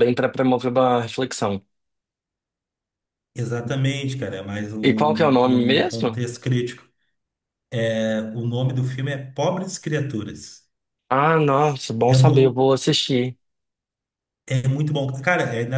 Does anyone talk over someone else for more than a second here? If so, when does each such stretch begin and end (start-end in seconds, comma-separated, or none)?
4.8-6.3